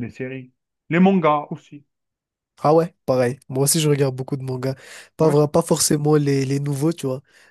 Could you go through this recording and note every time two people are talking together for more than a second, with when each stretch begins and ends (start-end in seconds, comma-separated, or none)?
none